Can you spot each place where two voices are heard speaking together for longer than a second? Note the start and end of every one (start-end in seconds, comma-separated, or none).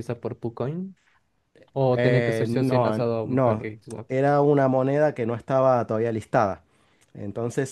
1.9-3.6